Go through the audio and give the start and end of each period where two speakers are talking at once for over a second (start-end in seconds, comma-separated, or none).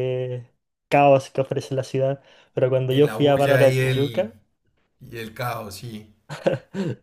2.9-4.3